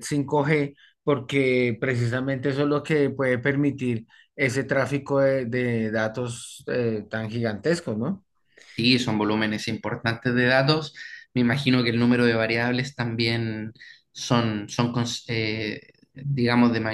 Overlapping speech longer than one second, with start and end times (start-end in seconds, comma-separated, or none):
none